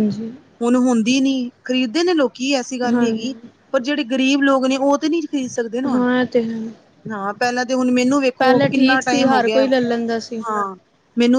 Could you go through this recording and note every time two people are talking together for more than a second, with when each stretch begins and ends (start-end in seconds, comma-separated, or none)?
8.4-9.6